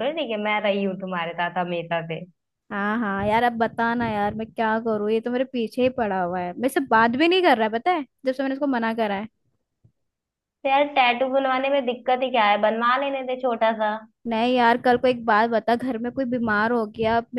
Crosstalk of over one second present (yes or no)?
no